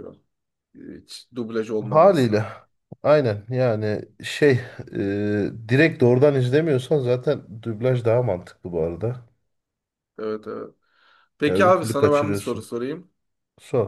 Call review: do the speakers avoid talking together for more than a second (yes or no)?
no